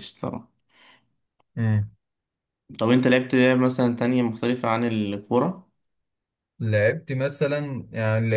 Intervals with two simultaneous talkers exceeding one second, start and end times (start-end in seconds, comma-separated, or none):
none